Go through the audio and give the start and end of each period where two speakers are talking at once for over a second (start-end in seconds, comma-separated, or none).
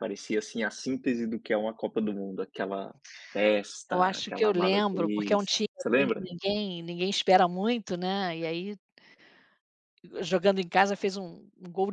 3.9-6.3